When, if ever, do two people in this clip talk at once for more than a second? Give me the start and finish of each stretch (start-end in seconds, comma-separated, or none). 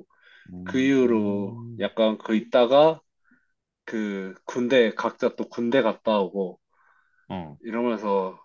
0.6-1.9